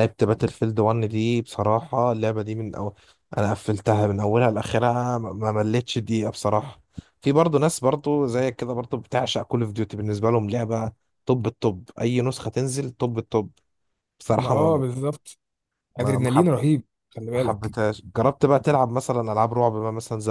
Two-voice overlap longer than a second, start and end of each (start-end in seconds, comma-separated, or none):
none